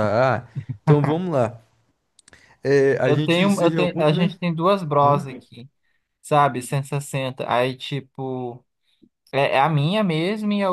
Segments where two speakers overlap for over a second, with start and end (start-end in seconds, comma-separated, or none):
3.0-4.4